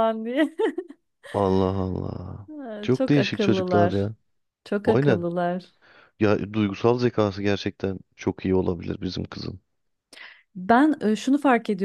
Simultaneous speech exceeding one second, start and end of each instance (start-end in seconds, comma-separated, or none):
2.5-4.1